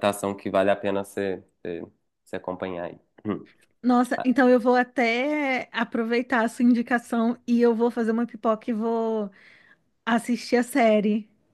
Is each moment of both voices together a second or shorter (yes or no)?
yes